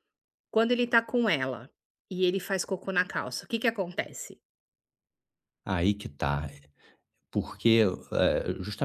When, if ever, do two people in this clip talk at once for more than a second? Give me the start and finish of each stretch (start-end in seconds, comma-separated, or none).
none